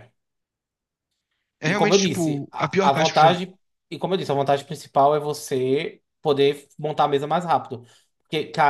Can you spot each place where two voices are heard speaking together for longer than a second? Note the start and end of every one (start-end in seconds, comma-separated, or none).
1.7-3.4